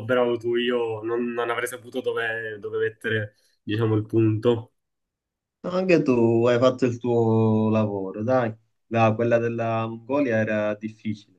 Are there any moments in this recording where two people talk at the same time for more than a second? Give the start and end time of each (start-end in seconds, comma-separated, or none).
none